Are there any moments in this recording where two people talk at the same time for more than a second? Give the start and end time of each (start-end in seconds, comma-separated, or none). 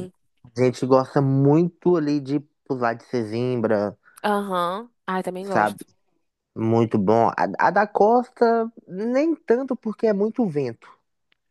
none